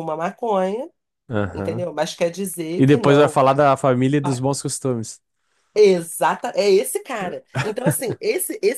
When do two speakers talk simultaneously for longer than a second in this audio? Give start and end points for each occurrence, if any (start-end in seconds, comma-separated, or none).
none